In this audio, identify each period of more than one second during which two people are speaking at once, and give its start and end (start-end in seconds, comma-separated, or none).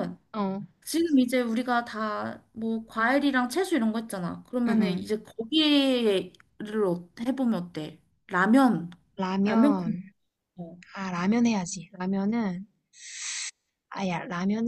none